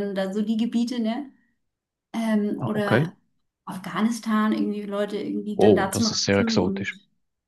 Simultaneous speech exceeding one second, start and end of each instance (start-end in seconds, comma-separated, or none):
5.6-7.0